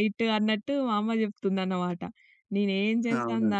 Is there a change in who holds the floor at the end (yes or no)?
no